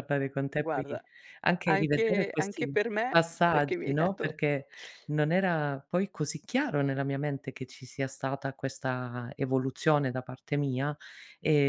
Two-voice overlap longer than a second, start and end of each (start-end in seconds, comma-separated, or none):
1.6-4.3